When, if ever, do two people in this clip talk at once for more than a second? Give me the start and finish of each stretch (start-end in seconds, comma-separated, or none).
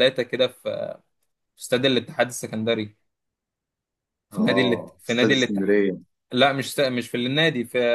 4.3-5.8